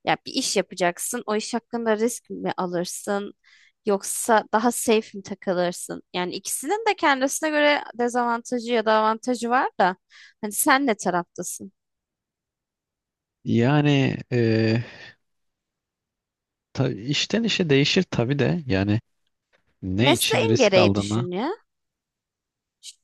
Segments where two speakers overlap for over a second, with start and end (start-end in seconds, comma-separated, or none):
20.0-21.3